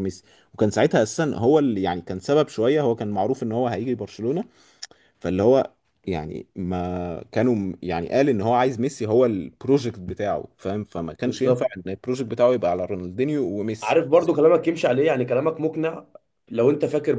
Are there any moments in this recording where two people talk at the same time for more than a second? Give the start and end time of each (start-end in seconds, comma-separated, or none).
none